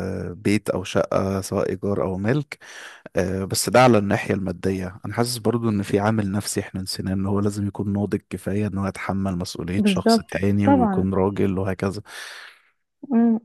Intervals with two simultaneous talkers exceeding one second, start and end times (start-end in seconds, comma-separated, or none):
9.8-11.1